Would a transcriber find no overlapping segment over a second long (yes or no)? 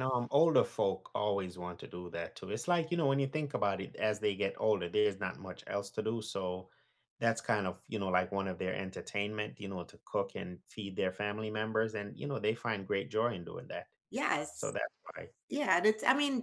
yes